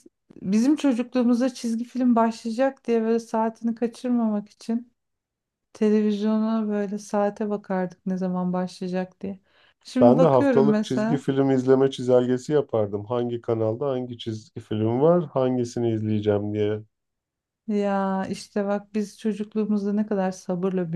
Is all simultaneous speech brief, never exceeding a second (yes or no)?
no